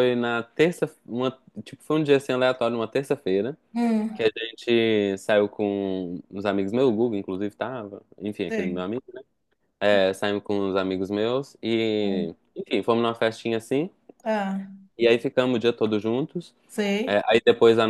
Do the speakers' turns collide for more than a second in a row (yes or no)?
no